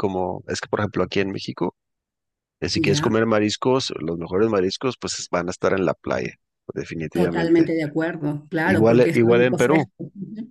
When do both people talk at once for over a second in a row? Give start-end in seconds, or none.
8.6-9.9